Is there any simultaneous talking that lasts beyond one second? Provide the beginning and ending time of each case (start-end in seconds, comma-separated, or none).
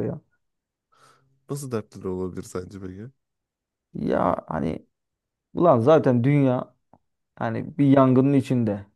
none